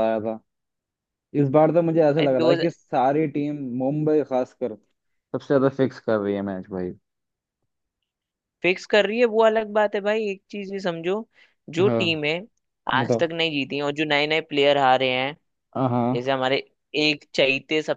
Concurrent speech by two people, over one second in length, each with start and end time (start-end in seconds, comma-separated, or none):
none